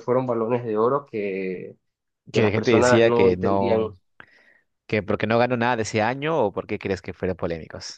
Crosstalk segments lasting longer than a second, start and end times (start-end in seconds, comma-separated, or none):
2.3-4.0